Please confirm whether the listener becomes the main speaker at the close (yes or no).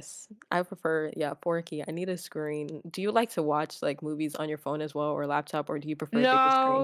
yes